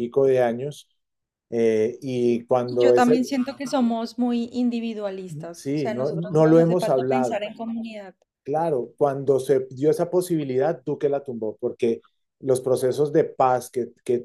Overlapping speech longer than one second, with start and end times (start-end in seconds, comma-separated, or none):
5.5-7.4